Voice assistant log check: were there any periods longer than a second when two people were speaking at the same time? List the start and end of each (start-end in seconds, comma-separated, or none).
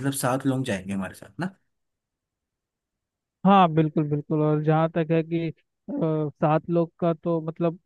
none